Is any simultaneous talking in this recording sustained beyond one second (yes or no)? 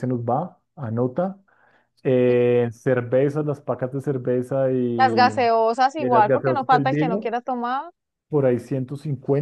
yes